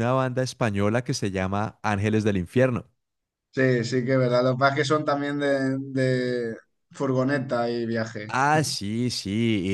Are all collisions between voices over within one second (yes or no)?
yes